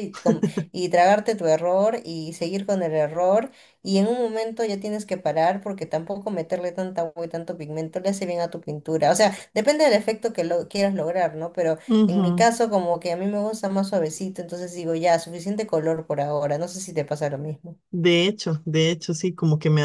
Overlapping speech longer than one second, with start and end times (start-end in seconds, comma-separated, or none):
none